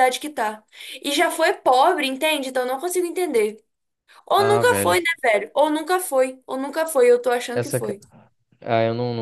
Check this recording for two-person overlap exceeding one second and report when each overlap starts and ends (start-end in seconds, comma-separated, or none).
none